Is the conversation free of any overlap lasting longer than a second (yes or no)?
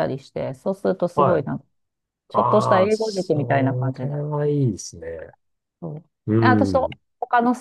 no